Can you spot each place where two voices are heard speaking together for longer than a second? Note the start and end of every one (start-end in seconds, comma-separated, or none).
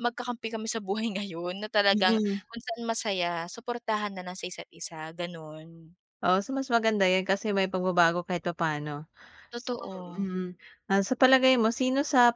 none